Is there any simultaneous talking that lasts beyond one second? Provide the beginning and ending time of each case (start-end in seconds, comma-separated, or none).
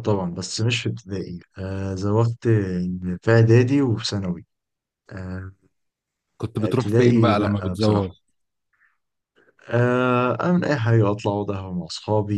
6.6-8.1